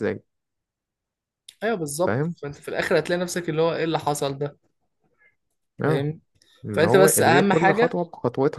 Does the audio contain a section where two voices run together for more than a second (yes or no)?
yes